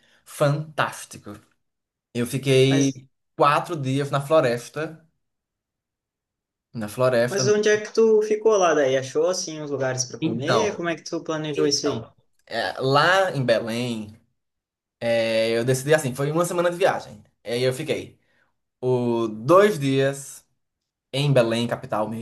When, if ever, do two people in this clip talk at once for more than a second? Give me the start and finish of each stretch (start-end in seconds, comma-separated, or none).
none